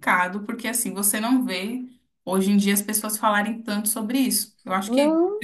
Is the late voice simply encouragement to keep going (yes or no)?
yes